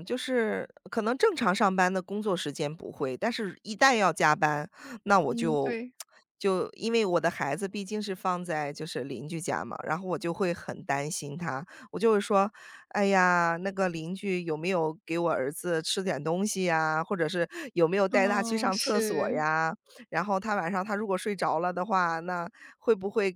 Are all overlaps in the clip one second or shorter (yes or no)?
no